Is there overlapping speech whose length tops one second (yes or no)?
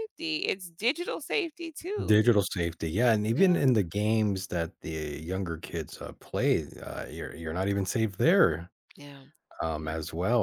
no